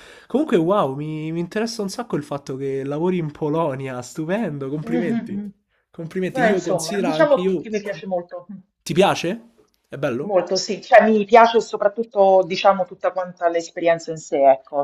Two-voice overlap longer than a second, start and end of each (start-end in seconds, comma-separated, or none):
6.3-7.7